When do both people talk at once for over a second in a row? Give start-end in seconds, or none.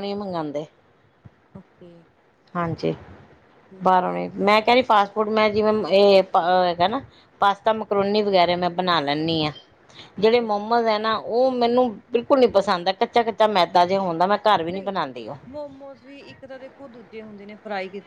none